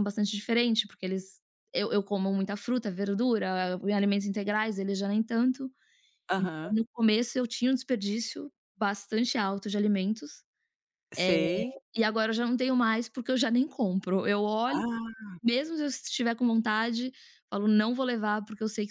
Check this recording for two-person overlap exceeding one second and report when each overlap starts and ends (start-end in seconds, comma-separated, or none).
none